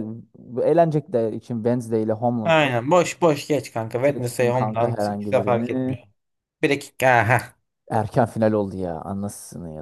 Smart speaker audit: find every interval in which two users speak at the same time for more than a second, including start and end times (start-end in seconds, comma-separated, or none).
4.0-6.0